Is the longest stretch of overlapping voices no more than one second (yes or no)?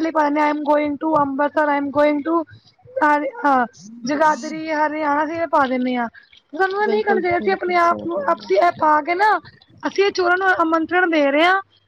no